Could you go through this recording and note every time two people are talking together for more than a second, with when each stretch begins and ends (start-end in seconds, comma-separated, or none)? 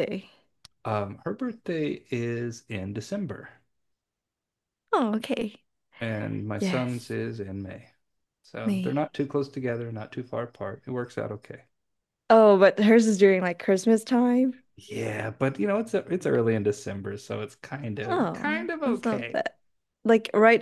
18.0-19.4